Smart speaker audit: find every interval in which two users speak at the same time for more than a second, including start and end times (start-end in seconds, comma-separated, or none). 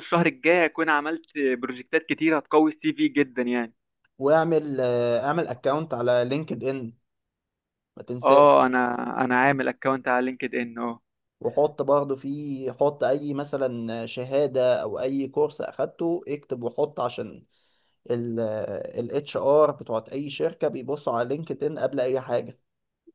none